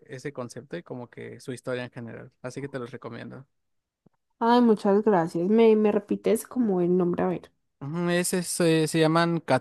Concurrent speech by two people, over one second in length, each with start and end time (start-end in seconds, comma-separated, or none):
none